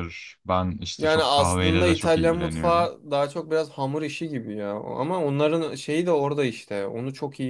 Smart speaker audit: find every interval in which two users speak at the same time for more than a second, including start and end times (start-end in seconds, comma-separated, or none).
1.0-2.9